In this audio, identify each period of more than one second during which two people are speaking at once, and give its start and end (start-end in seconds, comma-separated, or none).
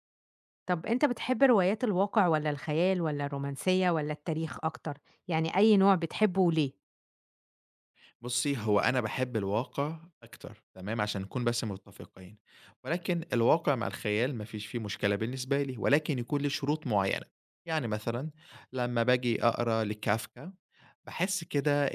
none